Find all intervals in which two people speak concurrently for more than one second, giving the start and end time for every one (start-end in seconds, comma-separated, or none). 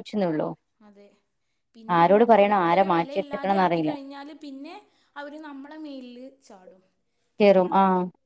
2.0-3.9